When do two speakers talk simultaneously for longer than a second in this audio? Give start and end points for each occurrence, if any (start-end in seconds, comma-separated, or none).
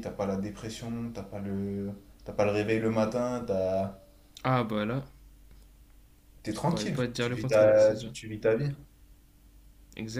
6.5-8.1